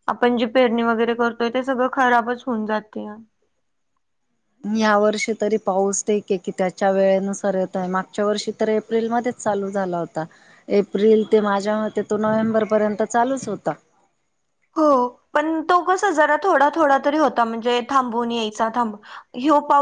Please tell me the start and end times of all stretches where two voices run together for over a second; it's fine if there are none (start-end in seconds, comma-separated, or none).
none